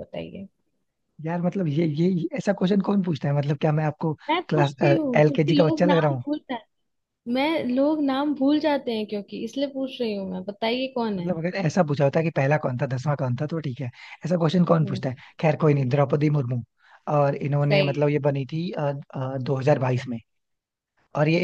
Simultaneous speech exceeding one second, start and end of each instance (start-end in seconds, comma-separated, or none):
4.5-6.2